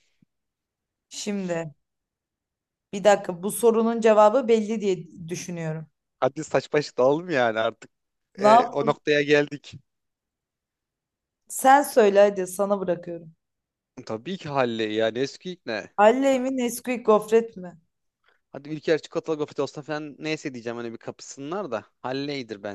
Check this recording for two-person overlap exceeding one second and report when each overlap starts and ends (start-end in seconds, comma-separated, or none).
none